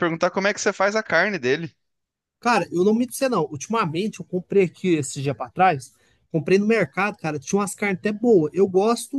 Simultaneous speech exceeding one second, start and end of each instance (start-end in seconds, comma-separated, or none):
none